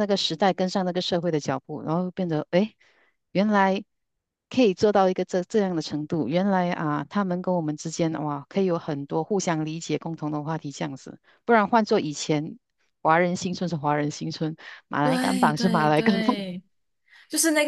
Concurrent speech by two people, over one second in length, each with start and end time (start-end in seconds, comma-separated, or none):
15.0-16.3